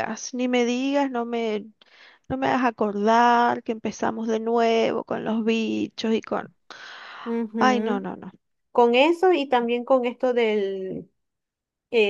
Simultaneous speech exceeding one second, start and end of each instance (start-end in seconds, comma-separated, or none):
none